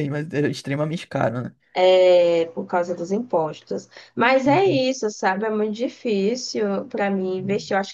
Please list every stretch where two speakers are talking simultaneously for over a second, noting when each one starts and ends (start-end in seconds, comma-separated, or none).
none